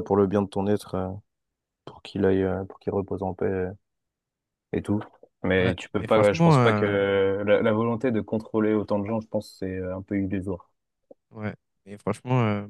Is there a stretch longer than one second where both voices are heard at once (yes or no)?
yes